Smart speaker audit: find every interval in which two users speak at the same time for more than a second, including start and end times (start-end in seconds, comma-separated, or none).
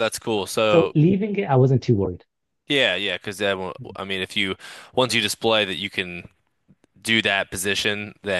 none